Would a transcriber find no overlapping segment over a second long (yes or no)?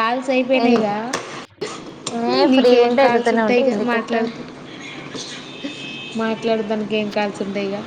no